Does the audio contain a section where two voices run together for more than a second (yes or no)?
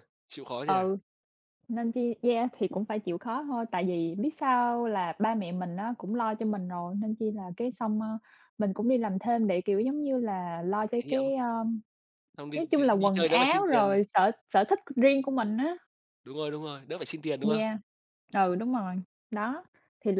yes